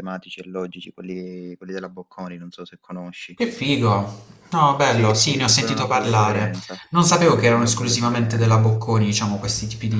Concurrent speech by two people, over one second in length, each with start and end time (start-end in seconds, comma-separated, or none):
4.9-6.5, 7.2-8.7